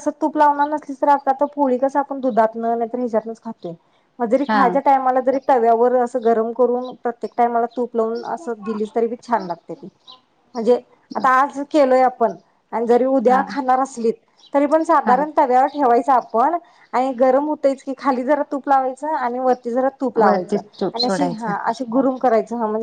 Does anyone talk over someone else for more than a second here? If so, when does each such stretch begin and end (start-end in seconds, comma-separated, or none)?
20.2-21.5